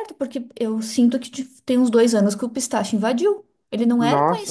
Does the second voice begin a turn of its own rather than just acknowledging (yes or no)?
yes